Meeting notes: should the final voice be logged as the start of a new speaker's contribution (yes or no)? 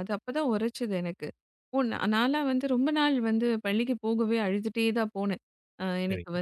no